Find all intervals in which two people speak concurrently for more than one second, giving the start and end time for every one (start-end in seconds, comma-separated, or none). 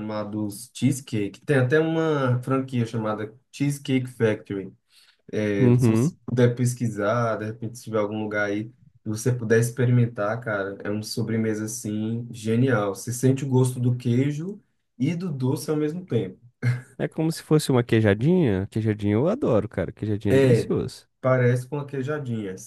none